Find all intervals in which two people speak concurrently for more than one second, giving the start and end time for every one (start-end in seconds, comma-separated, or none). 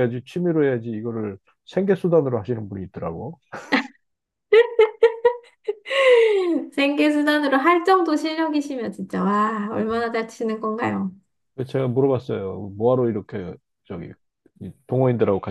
none